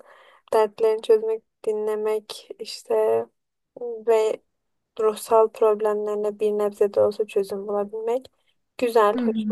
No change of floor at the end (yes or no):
yes